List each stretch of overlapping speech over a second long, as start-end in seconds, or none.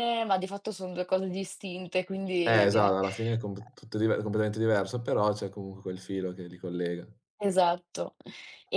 none